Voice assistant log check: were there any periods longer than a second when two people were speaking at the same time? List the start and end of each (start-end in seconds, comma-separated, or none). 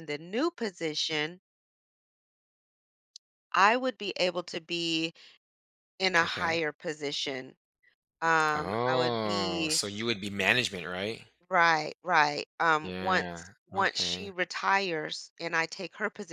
8.5-9.8, 12.8-14.3